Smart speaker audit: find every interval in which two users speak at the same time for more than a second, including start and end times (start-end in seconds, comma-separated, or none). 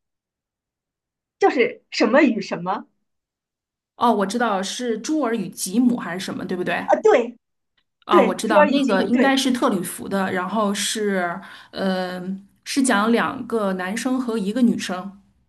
8.1-9.4